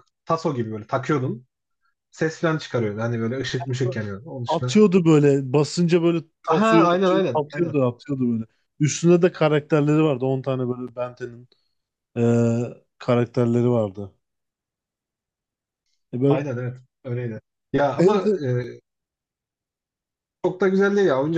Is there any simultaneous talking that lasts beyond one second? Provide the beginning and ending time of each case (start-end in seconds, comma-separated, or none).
6.5-7.8